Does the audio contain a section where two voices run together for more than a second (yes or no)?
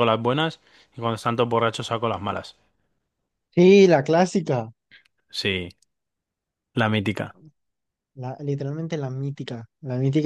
no